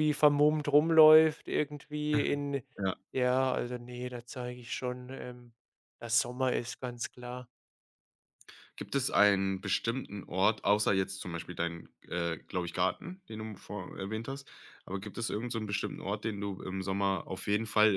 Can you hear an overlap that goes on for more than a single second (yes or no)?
no